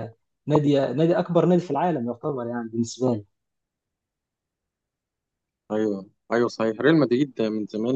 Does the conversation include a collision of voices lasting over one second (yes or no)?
no